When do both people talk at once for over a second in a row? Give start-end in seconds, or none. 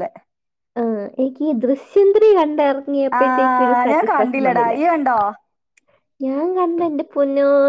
3.2-4.7